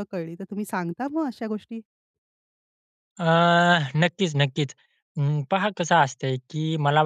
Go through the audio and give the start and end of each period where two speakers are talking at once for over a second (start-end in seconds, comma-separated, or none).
none